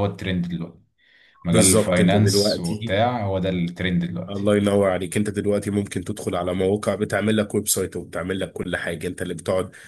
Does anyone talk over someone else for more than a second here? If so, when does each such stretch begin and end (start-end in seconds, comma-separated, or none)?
1.5-3.0